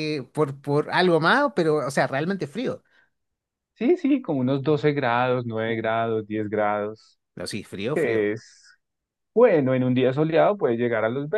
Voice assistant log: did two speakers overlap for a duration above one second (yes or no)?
no